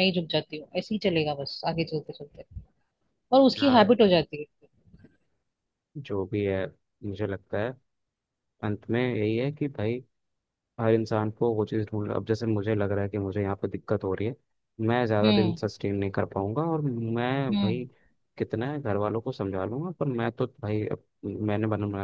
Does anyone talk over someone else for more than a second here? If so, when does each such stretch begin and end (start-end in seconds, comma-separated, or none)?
none